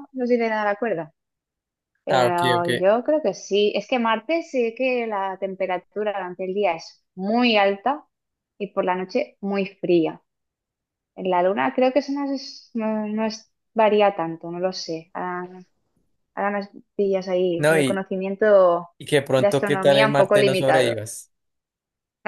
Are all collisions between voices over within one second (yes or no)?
no